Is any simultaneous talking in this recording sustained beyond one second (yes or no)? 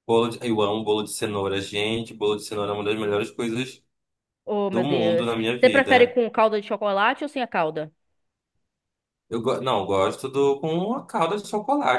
yes